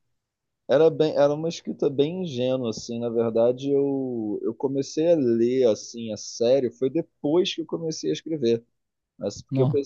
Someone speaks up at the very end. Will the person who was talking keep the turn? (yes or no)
yes